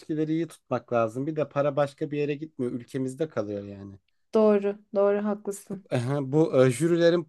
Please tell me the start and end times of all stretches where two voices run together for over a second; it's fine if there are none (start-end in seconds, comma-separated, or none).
none